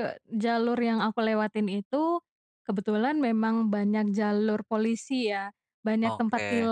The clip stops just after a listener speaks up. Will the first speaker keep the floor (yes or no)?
yes